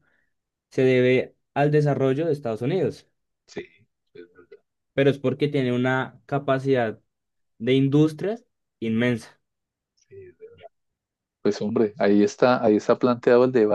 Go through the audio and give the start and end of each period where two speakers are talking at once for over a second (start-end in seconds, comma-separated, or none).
none